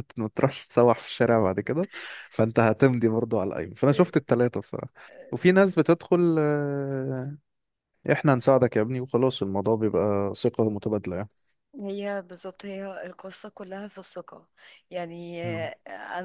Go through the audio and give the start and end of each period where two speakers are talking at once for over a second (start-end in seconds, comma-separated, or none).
none